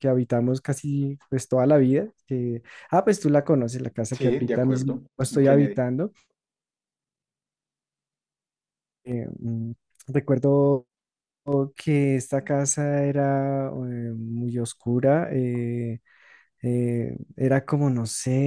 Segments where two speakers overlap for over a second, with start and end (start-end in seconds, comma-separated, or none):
4.1-5.8